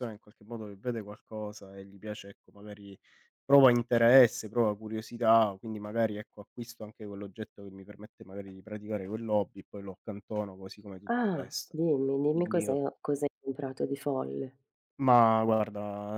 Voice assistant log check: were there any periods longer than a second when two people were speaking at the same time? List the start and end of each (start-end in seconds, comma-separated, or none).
none